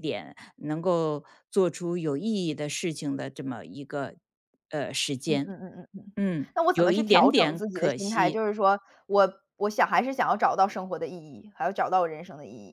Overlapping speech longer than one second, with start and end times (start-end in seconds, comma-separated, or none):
6.5-8.4